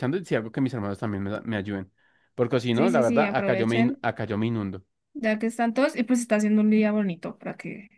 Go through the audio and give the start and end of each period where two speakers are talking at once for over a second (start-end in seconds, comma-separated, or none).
2.7-4.0